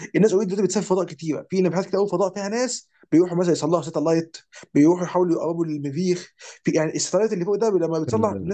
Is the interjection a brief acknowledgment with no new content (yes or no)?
no